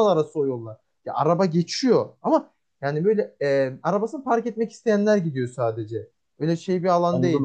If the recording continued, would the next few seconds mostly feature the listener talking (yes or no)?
yes